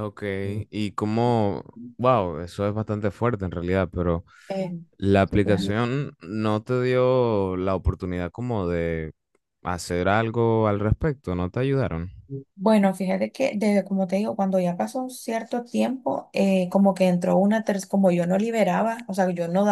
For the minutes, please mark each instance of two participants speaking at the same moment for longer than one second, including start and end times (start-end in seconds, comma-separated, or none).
none